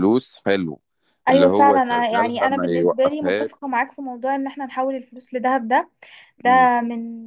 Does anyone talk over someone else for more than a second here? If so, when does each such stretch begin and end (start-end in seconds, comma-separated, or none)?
1.3-3.5